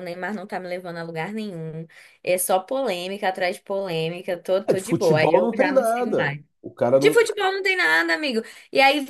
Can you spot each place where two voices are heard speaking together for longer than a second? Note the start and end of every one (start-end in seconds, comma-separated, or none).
4.7-6.4